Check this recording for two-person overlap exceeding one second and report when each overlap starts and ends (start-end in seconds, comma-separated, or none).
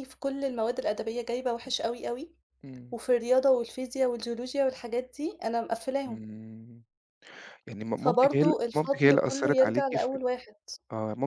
8.0-10.2